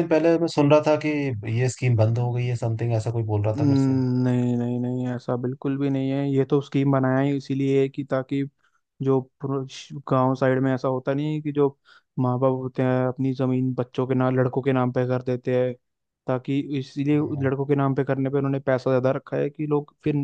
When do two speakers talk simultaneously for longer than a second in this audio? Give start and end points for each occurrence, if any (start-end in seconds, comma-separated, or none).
none